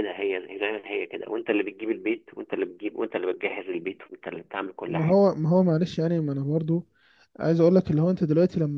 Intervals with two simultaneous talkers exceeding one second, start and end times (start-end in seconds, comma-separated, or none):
none